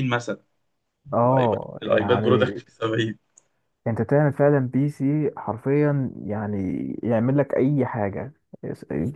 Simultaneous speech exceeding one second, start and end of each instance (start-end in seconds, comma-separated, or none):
1.2-2.6